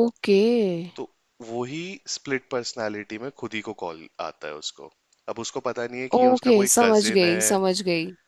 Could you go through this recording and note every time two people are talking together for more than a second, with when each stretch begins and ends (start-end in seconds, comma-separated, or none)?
6.2-7.6